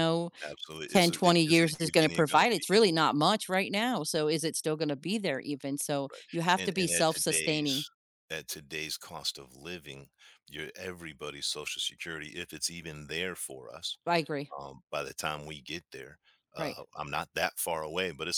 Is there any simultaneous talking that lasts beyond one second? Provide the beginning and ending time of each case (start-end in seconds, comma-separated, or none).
0.9-2.9, 6.6-7.8